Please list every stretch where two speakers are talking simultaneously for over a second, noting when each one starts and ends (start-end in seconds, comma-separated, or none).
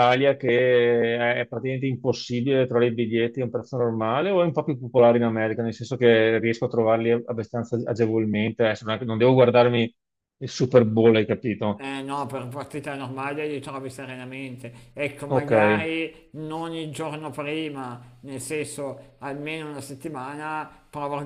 none